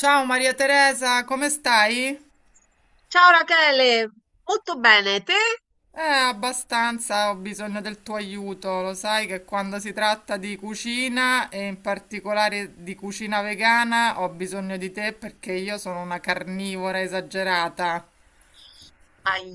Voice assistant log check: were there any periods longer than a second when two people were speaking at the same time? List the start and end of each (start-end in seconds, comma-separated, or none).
none